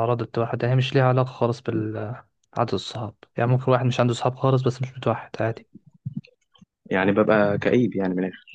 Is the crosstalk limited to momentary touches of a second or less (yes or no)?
yes